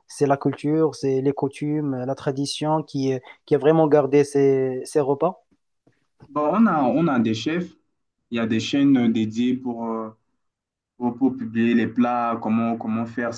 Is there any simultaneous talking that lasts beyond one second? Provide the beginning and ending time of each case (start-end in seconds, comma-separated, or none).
none